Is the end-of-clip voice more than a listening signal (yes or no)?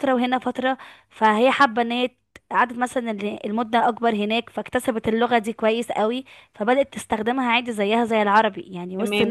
yes